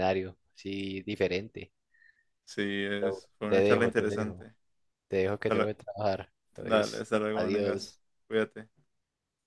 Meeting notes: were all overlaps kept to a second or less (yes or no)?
no